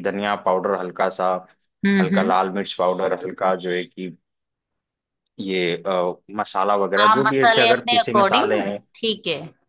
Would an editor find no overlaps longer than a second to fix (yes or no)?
no